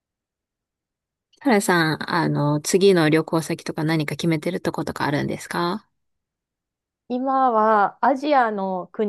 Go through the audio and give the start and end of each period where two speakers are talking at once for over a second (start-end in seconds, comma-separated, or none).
none